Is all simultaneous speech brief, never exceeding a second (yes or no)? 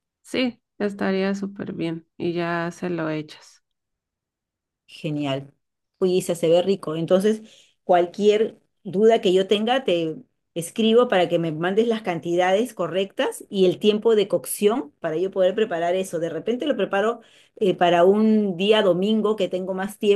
yes